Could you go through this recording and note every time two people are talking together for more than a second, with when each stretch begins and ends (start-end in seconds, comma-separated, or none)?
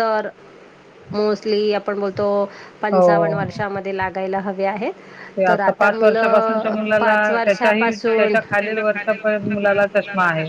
5.8-8.3